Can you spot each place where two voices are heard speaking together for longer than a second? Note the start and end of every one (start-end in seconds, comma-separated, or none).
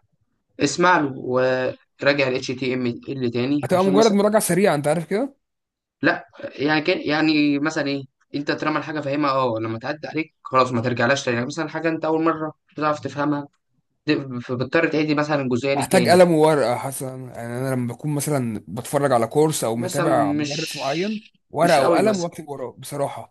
19.7-22.3